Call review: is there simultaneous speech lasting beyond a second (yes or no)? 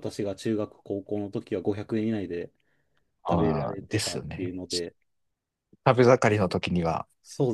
yes